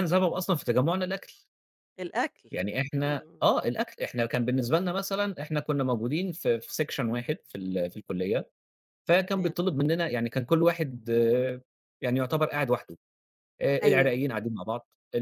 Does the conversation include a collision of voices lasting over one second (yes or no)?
no